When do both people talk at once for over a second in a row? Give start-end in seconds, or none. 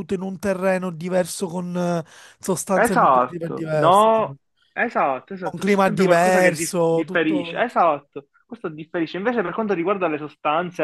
2.7-4.2, 5.4-7.7